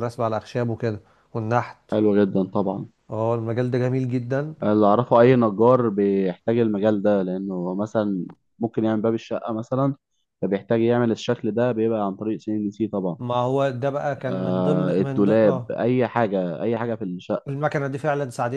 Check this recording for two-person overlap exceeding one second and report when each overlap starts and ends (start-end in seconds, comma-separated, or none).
14.3-15.7